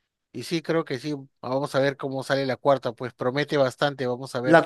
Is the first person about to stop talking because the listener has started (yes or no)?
yes